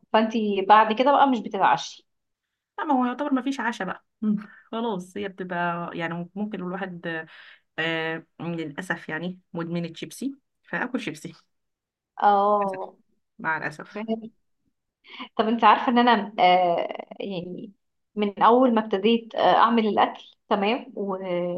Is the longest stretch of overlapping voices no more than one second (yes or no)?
yes